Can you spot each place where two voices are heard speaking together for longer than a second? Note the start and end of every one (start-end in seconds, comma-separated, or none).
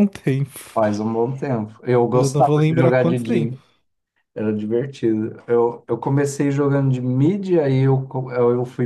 2.1-3.6